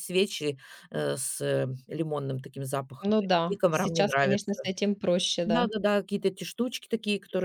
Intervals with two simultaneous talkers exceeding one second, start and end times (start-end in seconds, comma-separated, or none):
3.0-4.5